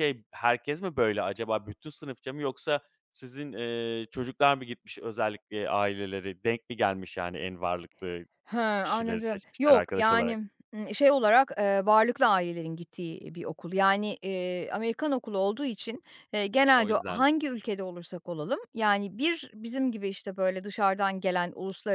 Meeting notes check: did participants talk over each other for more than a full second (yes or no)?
yes